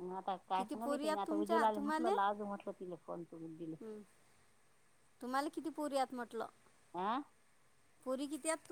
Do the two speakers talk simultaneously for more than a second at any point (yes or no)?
yes